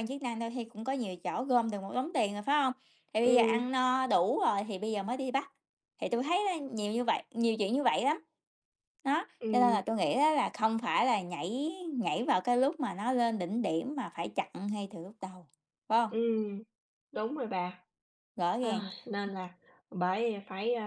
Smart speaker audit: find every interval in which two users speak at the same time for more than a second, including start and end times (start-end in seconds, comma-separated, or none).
none